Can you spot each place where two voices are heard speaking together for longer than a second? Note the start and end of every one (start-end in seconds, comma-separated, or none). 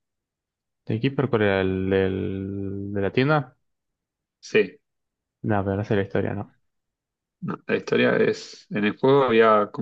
none